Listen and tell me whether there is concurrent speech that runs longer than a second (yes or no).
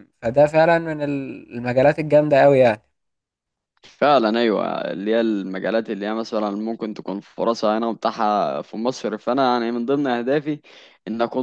no